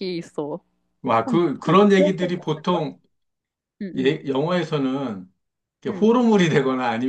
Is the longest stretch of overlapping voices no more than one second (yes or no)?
no